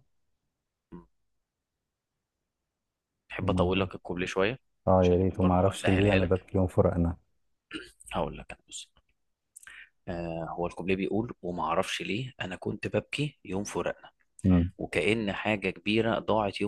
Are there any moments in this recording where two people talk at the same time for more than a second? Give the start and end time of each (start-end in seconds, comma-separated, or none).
5.0-6.5